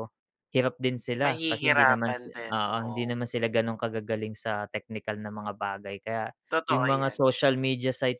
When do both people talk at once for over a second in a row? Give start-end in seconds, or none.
1.2-3.1